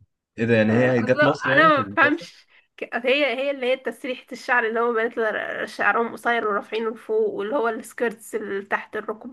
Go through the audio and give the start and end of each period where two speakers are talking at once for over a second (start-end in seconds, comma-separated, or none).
0.7-2.3